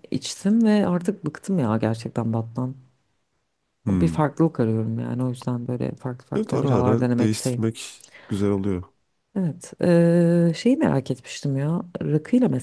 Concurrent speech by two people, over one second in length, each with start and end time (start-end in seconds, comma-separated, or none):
6.4-7.6